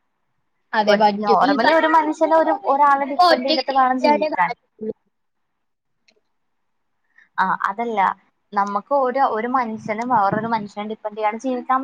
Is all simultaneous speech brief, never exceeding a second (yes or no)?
no